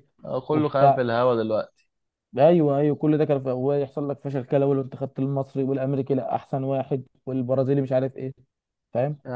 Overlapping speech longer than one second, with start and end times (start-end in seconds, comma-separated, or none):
none